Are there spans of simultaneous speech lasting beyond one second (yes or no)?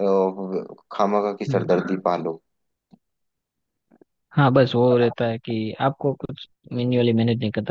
no